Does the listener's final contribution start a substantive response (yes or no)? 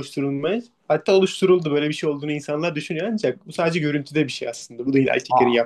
yes